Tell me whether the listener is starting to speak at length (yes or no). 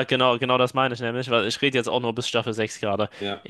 no